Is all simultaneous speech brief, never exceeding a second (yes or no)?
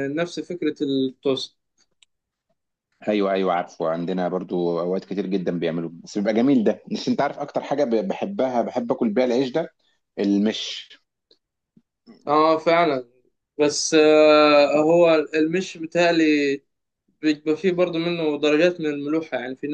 yes